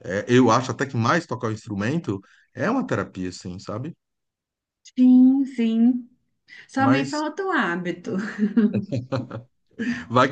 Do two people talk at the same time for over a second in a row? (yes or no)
no